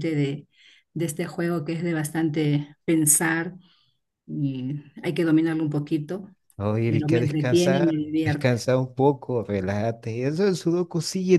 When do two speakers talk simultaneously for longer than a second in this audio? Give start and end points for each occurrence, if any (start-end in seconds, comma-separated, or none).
6.9-8.6